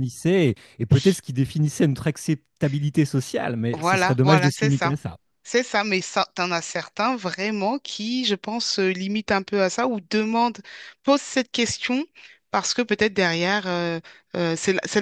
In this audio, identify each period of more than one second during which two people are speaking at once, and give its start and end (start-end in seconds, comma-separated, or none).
3.7-4.9